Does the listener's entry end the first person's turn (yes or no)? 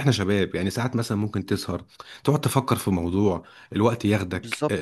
yes